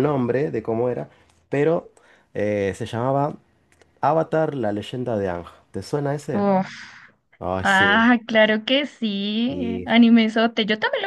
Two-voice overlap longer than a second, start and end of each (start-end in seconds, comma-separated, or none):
none